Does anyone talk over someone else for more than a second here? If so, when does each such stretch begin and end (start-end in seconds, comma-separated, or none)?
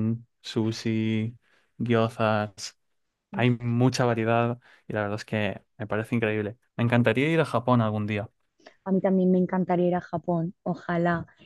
none